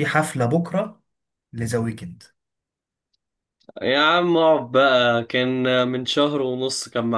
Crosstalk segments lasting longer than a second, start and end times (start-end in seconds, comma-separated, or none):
none